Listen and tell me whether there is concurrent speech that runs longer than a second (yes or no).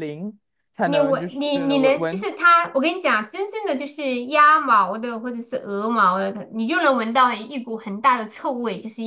yes